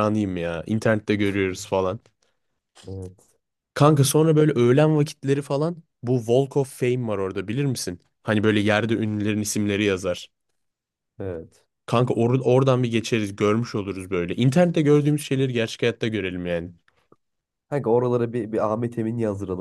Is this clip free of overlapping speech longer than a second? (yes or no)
yes